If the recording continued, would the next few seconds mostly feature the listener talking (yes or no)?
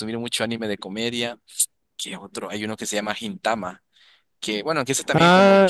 yes